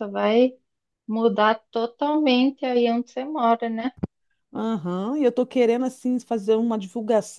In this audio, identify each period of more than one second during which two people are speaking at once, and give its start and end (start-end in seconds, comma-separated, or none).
none